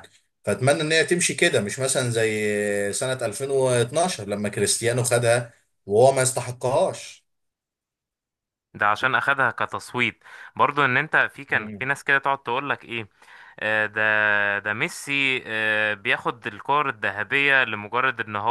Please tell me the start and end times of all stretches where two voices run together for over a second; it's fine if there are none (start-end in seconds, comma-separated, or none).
none